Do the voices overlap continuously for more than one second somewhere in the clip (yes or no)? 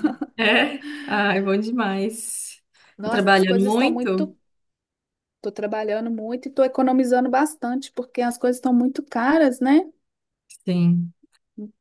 yes